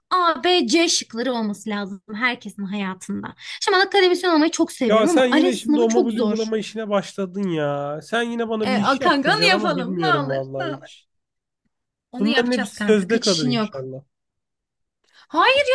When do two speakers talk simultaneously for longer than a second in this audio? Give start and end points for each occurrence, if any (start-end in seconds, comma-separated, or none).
4.9-6.5, 8.6-10.9, 12.2-13.9